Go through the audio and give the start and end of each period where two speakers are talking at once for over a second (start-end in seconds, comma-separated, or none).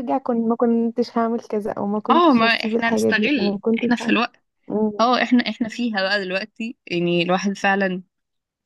2.1-4.1